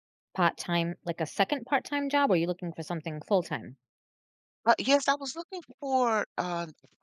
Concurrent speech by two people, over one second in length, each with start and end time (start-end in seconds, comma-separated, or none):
none